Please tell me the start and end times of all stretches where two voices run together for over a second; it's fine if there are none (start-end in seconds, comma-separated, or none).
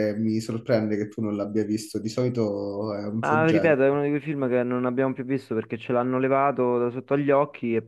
none